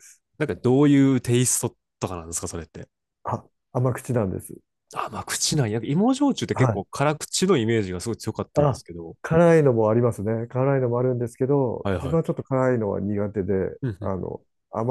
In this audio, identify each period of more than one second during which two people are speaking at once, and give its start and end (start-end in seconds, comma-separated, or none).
none